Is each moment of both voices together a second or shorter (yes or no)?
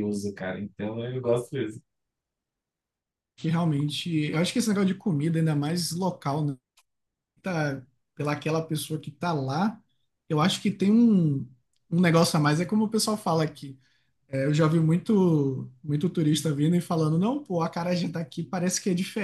yes